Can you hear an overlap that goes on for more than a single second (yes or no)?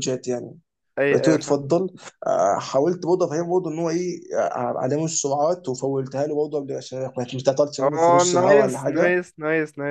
yes